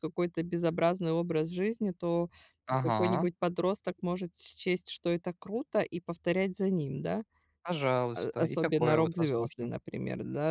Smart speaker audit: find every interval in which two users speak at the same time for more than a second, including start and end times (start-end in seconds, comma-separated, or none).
8.1-9.7